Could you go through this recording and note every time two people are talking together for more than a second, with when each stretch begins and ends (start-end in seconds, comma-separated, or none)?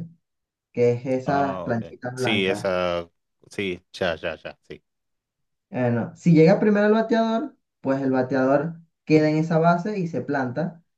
1.2-2.8